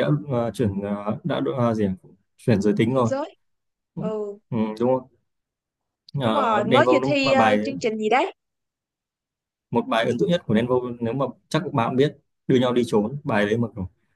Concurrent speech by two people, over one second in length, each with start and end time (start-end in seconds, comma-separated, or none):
6.2-7.6